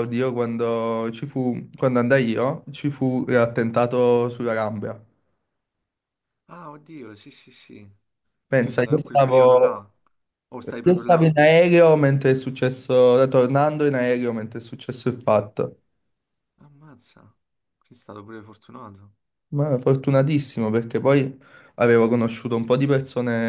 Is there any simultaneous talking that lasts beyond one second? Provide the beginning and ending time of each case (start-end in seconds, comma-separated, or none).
8.6-9.9